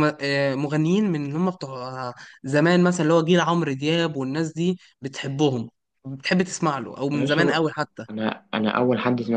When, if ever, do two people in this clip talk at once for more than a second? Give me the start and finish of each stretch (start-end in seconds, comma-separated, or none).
none